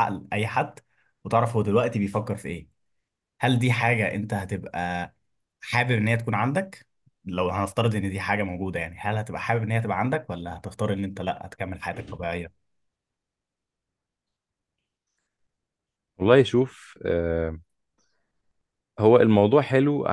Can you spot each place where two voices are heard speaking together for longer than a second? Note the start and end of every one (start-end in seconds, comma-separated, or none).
none